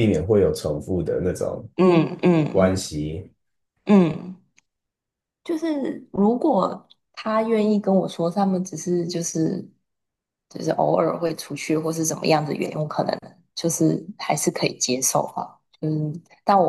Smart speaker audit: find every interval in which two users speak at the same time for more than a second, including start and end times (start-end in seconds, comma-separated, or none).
none